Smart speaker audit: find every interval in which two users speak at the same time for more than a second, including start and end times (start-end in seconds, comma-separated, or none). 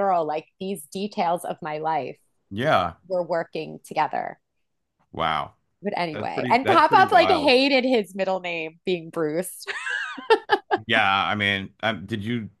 6.1-7.6